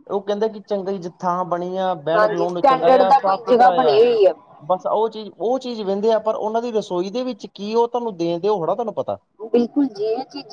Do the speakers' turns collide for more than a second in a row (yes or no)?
yes